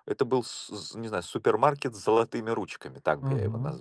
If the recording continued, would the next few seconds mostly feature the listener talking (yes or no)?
yes